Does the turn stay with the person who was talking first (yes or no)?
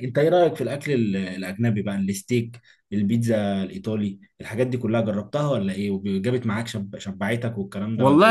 no